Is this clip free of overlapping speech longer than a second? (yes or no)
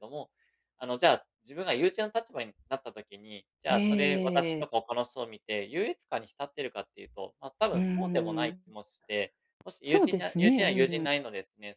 no